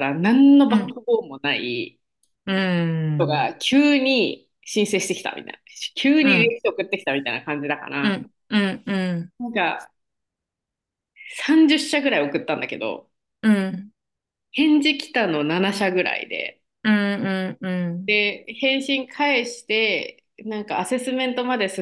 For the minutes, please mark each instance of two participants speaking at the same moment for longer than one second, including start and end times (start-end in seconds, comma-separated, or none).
none